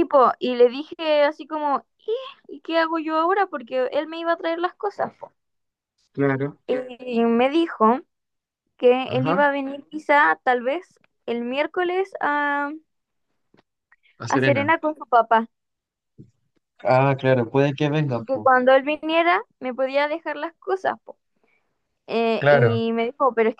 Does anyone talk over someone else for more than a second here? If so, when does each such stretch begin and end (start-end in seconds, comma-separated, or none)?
none